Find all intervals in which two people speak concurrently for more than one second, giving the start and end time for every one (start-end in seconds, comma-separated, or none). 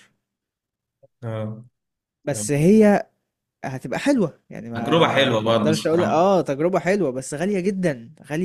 4.7-6.3